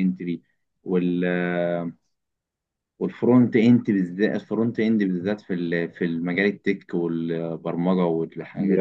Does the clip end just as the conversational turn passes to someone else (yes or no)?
yes